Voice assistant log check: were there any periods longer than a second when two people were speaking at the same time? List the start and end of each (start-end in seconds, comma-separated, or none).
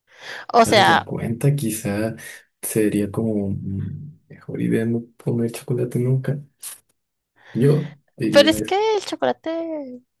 none